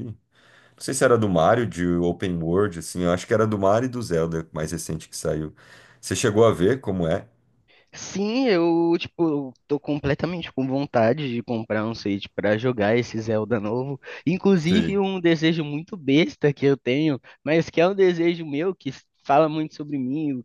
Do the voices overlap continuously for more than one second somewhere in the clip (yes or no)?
no